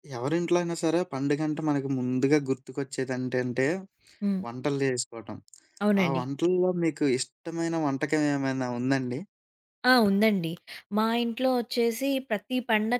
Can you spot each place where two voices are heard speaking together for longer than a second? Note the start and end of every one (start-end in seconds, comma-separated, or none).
none